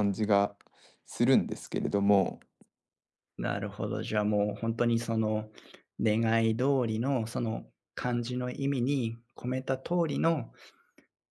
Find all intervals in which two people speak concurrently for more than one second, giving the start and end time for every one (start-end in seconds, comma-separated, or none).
none